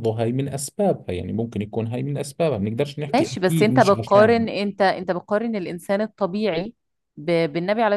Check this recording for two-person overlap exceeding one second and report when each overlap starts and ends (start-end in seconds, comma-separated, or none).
3.1-4.5